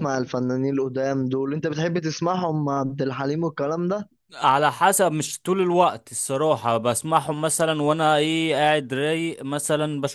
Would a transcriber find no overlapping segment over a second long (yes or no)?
yes